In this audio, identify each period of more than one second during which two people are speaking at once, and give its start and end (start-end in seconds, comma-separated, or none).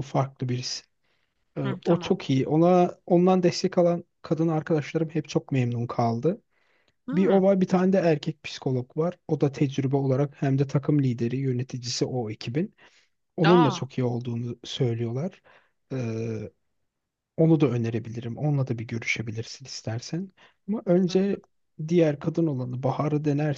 none